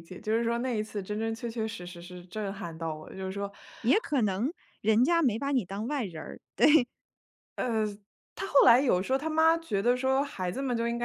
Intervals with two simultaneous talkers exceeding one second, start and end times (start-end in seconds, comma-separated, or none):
none